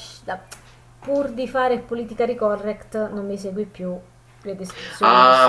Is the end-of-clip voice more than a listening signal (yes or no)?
yes